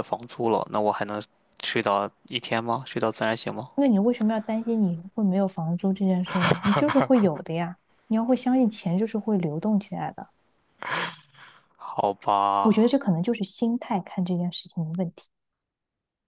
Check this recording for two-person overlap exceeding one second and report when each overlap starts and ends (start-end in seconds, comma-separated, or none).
none